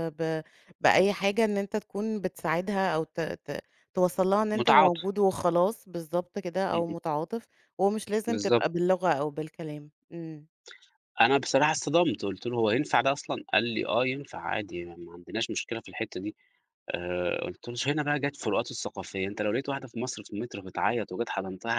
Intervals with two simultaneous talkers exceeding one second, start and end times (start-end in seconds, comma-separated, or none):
none